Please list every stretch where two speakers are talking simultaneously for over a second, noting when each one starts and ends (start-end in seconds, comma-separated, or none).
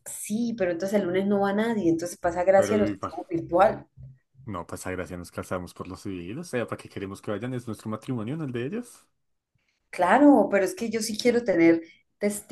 none